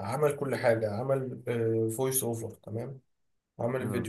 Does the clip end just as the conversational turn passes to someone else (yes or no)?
no